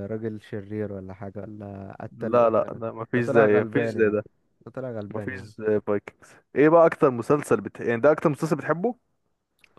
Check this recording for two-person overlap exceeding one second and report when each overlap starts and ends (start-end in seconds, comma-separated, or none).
2.2-4.2